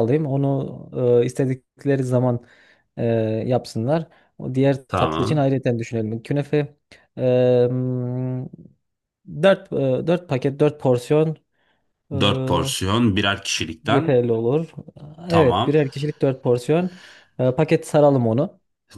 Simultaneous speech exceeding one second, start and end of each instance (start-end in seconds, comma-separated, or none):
none